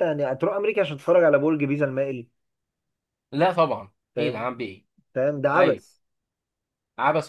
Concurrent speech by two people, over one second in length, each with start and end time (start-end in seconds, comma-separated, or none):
none